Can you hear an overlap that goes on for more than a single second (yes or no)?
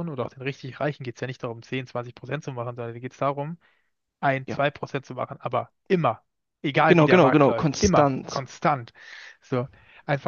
yes